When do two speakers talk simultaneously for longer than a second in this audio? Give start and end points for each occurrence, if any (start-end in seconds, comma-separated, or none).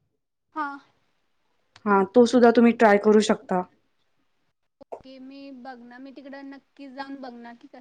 none